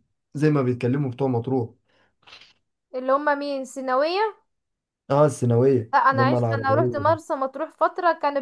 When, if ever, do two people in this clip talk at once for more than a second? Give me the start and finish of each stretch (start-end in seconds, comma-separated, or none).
5.9-7.2